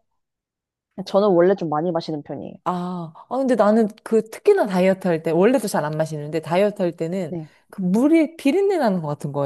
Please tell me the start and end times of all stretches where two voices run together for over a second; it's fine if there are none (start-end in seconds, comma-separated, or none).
none